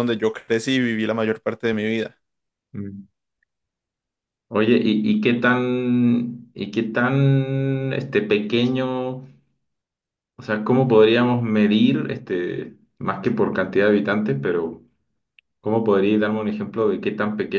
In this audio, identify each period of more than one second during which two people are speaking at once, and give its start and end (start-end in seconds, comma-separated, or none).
none